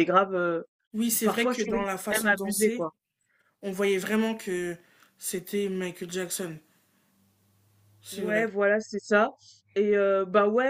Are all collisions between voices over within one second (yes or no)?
no